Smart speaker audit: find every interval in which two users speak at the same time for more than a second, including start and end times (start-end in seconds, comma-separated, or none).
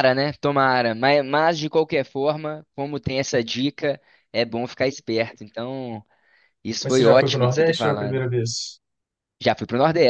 6.8-8.2